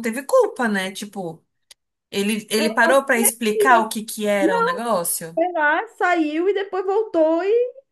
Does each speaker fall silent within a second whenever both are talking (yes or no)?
yes